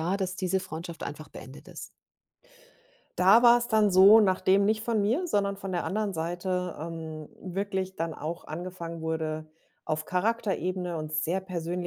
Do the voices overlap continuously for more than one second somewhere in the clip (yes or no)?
no